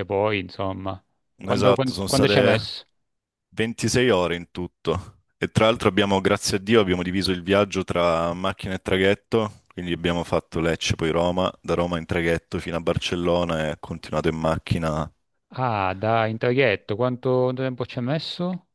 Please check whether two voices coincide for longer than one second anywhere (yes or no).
yes